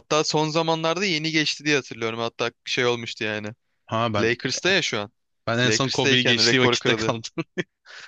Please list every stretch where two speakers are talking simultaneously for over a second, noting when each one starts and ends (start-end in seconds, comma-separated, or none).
5.7-7.2